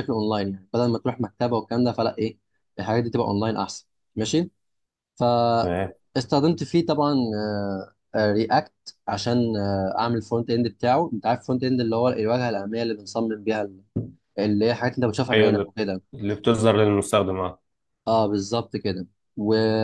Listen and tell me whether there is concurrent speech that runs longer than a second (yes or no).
no